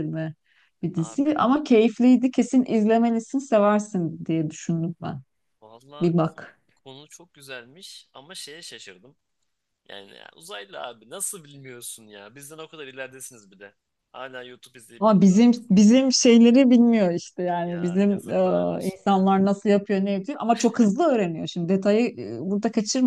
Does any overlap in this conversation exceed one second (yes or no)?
yes